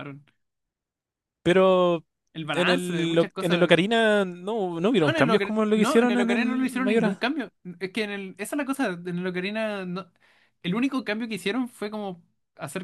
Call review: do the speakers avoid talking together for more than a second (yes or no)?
no